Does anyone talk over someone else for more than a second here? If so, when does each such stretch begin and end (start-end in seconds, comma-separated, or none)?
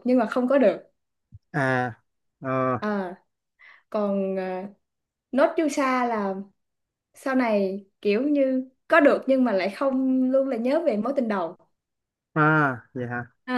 none